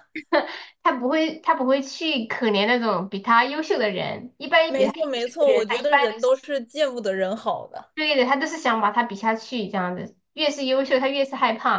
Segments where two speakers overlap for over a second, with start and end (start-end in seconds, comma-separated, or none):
4.6-6.5